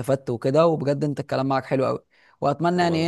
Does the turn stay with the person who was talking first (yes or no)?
yes